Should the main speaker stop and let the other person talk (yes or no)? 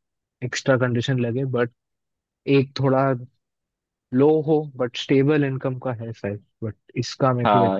yes